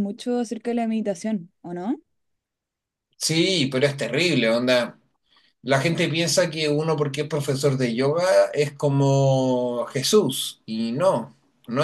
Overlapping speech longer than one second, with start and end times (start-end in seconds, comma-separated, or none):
none